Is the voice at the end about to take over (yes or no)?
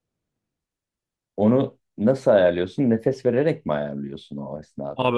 yes